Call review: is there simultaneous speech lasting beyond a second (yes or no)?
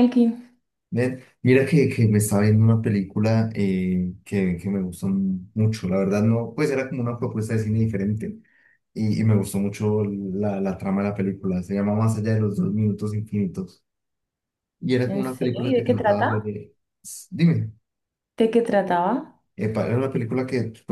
yes